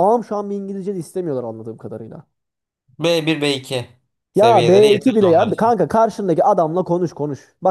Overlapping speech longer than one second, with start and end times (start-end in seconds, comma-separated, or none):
4.3-5.7